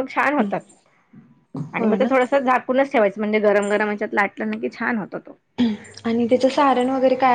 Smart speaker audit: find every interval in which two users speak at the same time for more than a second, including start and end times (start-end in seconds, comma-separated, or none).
none